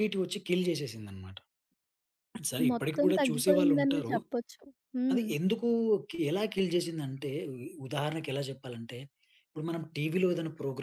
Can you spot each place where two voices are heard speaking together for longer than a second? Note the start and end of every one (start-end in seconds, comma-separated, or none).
2.7-4.1